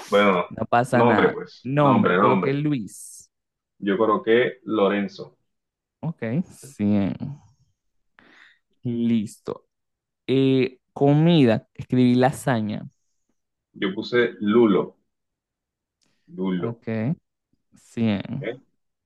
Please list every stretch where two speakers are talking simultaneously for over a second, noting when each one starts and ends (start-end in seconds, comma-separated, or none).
0.9-2.6